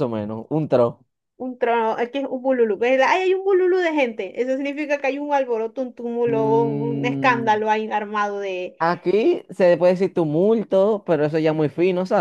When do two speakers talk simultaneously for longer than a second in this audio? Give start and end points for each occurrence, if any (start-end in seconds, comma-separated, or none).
6.3-7.6